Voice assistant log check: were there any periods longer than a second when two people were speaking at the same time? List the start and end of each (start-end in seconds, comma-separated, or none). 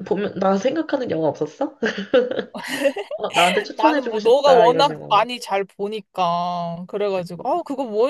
3.8-5.2